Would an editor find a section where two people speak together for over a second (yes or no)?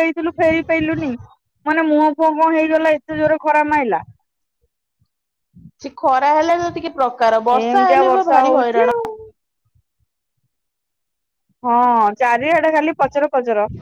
yes